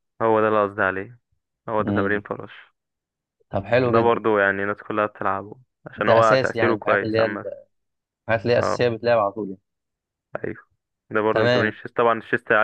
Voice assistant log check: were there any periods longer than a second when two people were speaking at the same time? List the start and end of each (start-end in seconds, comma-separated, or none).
6.0-7.5